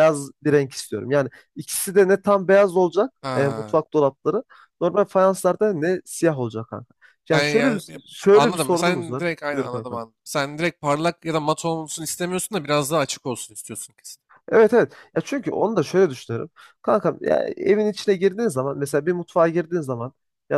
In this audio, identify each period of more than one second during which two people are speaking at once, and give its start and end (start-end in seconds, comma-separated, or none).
7.3-10.0